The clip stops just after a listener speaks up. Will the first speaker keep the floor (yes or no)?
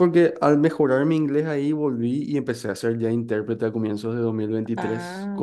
yes